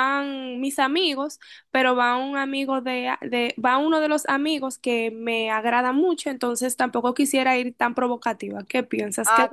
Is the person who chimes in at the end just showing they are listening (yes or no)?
no